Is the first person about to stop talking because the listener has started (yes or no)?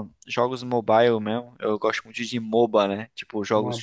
no